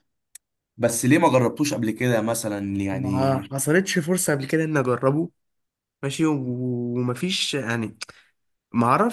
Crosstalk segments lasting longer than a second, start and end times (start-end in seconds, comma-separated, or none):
none